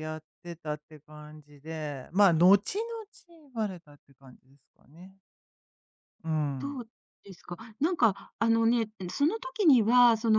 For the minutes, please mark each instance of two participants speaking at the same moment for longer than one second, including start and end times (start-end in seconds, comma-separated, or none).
none